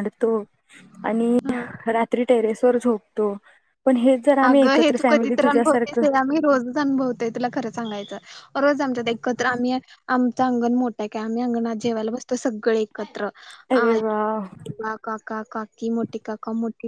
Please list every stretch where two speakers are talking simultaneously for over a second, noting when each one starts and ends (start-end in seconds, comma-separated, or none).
4.5-6.0